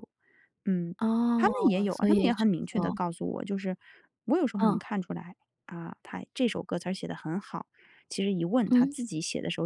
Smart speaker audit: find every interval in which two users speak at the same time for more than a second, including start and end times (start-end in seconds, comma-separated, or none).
1.3-3.0